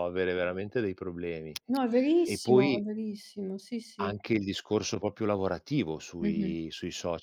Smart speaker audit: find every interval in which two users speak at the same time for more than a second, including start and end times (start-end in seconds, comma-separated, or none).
none